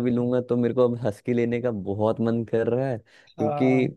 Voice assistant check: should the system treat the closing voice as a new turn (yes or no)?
no